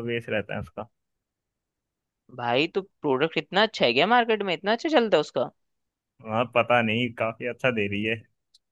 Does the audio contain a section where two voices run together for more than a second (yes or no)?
no